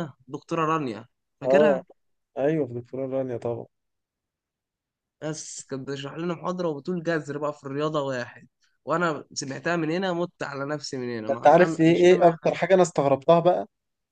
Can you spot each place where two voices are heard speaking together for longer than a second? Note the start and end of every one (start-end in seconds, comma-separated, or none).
11.3-12.6